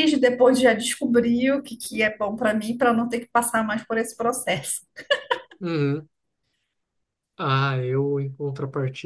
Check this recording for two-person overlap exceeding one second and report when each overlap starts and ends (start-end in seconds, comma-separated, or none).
none